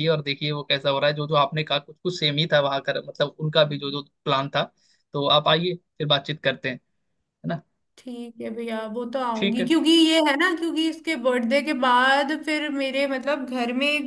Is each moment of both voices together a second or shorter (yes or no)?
yes